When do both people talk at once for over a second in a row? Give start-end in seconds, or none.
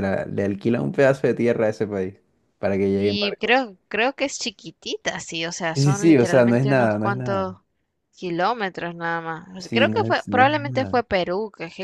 5.8-7.5, 9.6-11.0